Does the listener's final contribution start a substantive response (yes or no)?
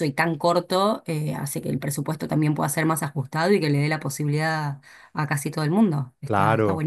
yes